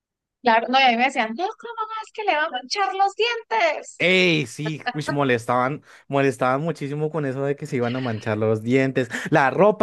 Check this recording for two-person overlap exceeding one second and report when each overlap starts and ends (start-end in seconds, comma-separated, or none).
none